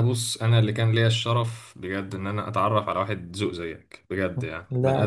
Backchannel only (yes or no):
yes